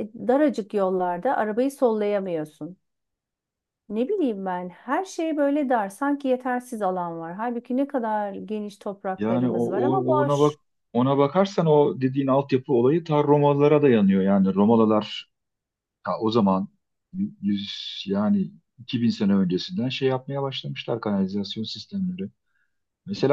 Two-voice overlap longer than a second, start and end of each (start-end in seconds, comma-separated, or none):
9.2-10.6